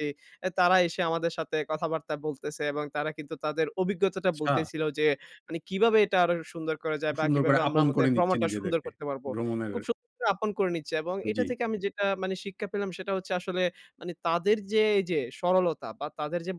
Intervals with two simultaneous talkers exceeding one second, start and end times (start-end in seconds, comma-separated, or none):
7.0-8.9